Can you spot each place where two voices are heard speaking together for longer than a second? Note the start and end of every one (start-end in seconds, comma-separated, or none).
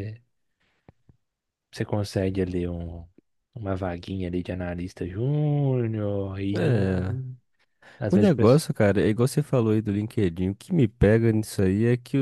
none